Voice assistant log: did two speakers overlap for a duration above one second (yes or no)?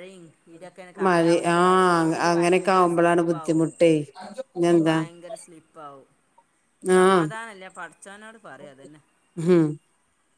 yes